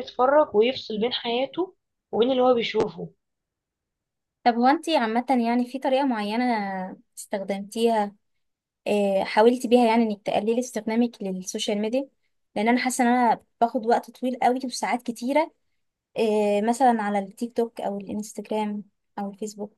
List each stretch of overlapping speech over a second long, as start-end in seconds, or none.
none